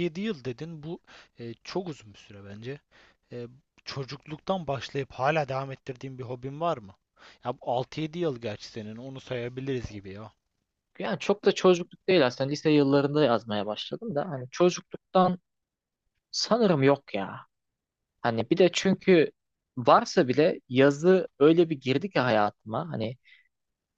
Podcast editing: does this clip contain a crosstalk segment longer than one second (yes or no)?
no